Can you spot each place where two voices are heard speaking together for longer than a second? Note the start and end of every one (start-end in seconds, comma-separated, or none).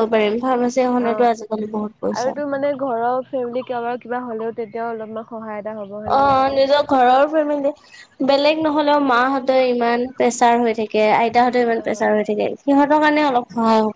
1.0-2.3